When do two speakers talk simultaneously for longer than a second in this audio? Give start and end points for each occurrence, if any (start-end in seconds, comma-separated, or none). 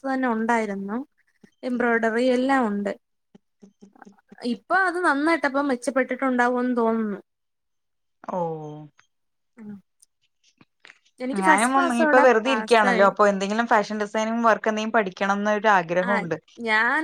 11.4-13.1